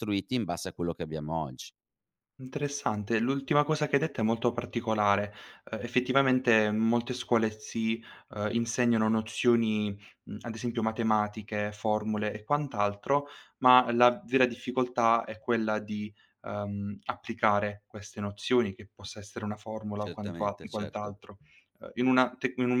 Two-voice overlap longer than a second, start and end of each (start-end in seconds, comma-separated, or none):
19.9-21.2